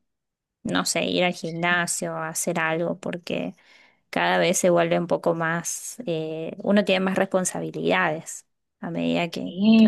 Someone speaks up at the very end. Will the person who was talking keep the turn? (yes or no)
no